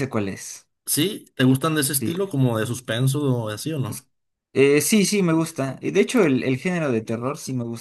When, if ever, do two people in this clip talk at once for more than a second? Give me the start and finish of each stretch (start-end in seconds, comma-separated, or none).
none